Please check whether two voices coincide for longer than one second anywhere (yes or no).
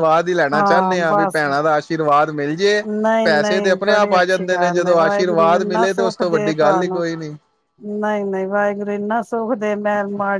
yes